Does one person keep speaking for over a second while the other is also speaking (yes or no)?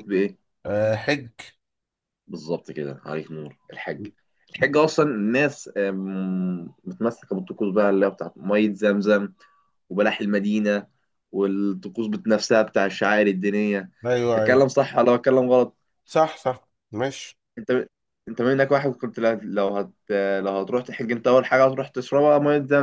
no